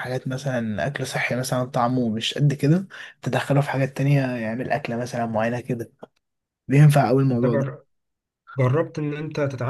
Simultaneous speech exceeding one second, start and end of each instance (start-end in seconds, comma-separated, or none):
none